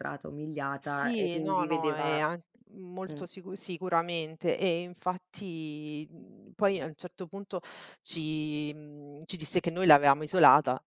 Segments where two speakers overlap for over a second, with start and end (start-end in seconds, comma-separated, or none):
0.8-2.2